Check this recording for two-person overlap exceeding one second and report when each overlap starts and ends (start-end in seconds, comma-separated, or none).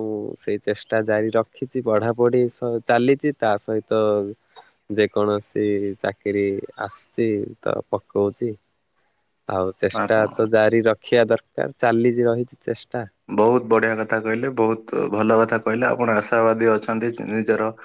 none